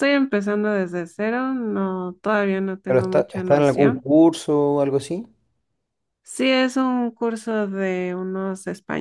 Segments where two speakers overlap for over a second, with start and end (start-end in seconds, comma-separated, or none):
2.9-4.1